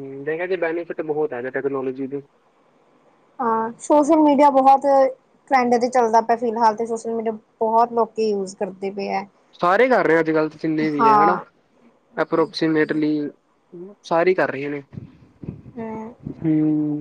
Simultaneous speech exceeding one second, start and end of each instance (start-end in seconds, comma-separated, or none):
none